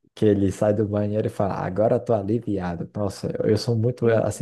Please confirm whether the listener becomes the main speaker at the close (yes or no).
no